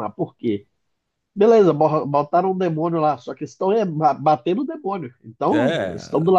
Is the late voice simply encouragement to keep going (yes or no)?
yes